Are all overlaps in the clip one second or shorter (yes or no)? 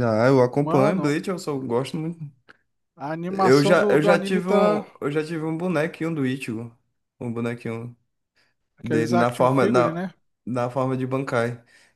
no